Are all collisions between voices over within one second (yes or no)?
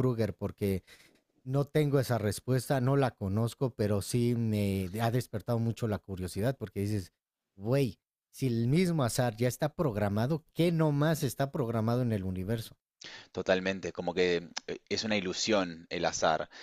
yes